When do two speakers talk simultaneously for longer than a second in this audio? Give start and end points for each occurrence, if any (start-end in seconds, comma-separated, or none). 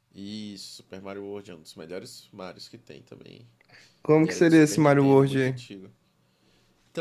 4.2-5.6